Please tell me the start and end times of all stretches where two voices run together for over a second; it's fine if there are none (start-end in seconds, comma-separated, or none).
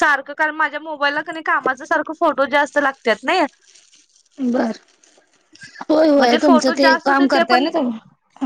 6.2-7.7